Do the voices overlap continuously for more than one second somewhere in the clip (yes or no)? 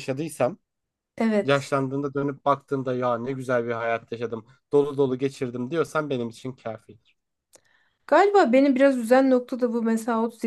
no